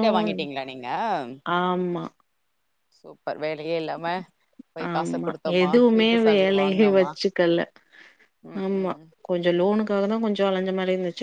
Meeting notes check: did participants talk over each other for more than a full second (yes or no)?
yes